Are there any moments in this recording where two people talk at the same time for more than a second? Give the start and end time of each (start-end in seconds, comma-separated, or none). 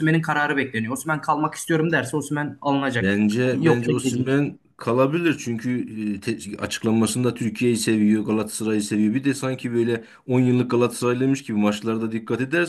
3.0-4.4